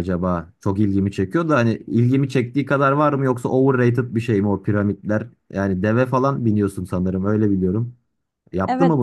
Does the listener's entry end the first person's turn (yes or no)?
yes